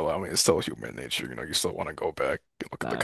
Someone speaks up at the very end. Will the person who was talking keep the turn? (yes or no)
no